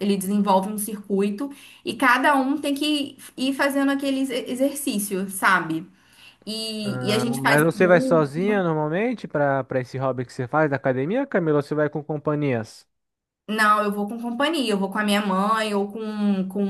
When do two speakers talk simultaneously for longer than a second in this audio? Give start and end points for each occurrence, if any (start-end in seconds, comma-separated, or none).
6.8-8.4